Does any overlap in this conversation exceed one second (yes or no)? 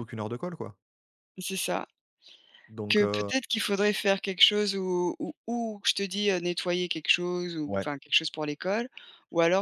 no